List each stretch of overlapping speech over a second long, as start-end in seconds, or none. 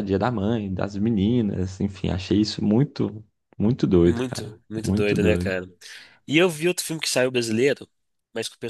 4.0-5.5